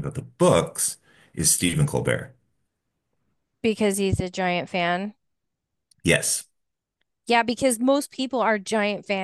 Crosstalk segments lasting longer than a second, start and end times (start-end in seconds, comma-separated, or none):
none